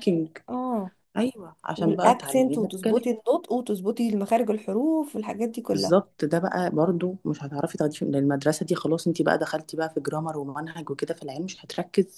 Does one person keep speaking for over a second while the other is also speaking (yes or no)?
yes